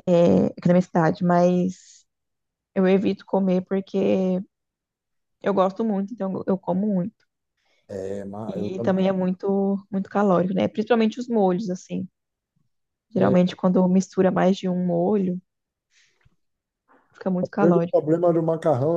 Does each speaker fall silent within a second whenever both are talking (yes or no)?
yes